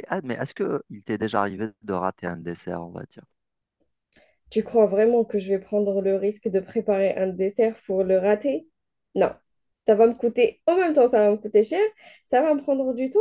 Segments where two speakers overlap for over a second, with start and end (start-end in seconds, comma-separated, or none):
none